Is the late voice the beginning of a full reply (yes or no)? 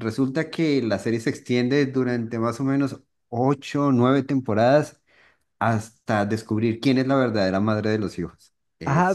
yes